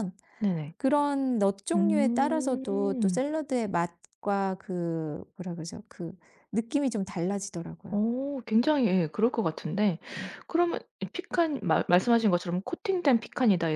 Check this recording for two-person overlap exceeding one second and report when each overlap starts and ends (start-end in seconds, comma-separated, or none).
1.7-3.2